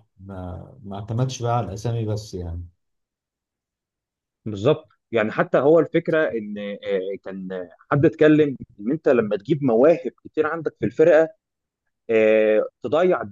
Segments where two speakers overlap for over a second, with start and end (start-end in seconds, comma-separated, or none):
none